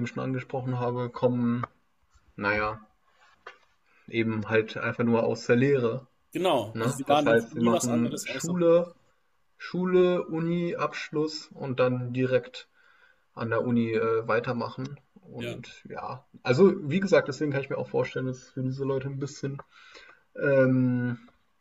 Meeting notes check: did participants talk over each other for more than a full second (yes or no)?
yes